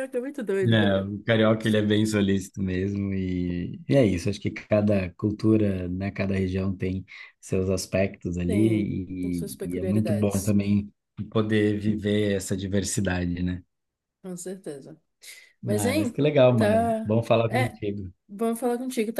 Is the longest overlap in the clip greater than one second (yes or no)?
yes